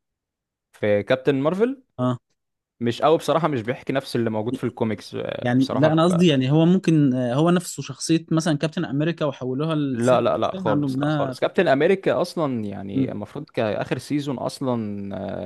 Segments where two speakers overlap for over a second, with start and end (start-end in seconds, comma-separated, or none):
9.9-11.3